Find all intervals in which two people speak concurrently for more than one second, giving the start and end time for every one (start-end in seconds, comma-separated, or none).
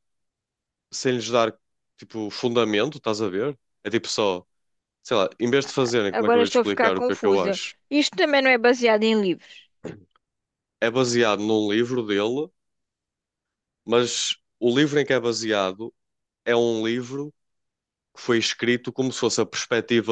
6.2-7.5